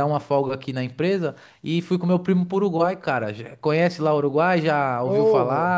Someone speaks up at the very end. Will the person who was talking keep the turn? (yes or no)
yes